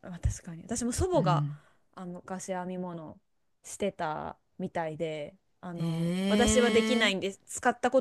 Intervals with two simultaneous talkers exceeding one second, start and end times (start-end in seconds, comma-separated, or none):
5.8-7.0